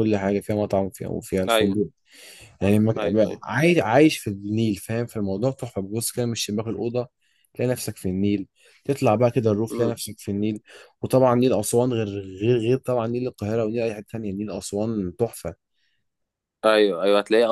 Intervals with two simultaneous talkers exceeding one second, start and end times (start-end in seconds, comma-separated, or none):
none